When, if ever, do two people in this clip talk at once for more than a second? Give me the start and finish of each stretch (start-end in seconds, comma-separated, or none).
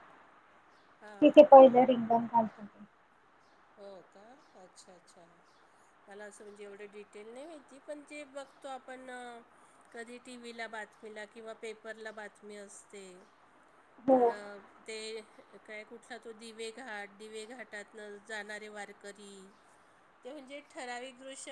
none